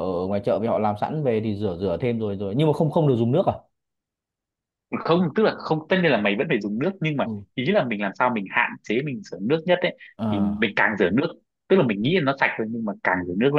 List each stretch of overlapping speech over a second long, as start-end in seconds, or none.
none